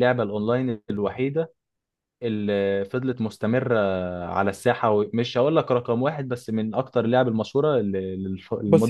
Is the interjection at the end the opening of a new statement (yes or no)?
yes